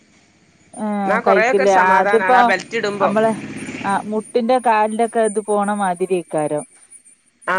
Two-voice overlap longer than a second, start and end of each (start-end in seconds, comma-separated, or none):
1.0-2.4